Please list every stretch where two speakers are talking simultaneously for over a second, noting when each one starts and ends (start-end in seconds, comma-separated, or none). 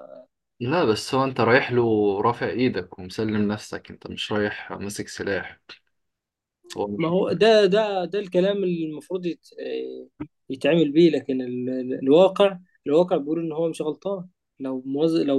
none